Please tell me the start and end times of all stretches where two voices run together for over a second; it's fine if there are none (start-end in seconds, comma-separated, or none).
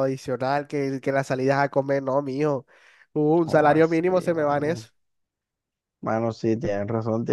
3.4-4.9